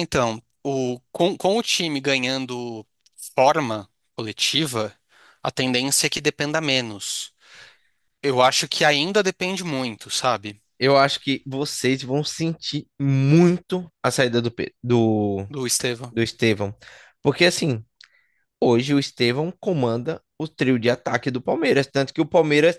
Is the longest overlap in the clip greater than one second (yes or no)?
no